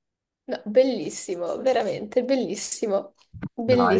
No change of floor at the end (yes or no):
no